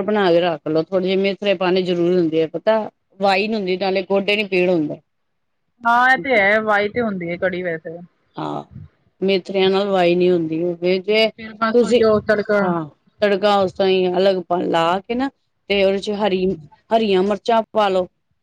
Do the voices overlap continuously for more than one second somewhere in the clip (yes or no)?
no